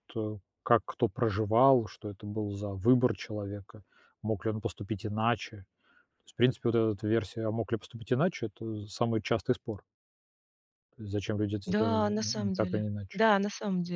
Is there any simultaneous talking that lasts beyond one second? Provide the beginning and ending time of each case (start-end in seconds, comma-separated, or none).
11.7-13.2